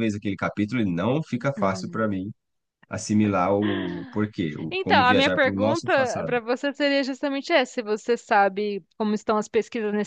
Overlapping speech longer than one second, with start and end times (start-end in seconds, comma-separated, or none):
4.7-6.3